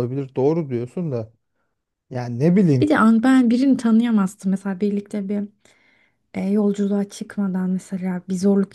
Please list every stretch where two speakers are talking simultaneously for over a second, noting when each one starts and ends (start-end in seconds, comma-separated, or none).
none